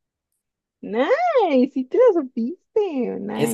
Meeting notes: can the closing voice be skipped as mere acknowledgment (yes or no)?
no